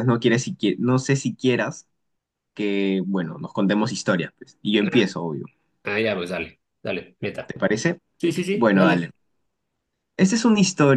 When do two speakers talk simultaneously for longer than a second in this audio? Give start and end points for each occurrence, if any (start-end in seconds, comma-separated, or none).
none